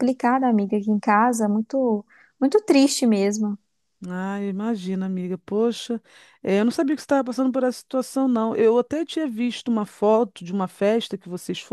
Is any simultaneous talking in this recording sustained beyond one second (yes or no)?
no